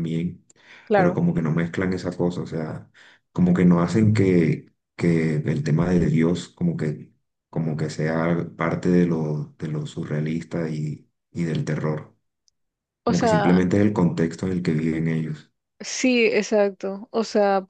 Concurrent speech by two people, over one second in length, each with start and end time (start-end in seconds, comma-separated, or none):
none